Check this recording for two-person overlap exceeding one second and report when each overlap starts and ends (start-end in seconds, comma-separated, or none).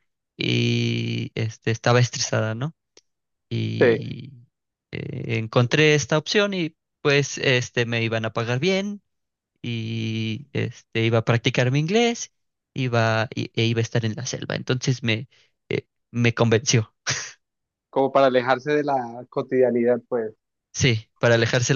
none